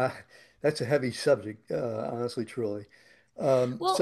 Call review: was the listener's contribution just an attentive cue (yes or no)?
no